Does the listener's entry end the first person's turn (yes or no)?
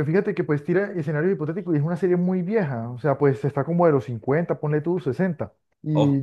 no